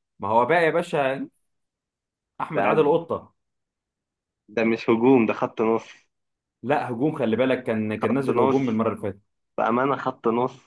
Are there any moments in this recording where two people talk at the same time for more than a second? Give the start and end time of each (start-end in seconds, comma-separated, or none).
none